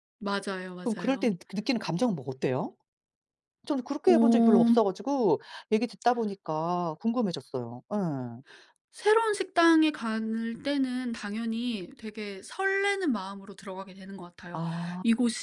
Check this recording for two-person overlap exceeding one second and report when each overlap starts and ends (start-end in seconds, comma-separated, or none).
none